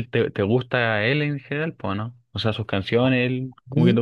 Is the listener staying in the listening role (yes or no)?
no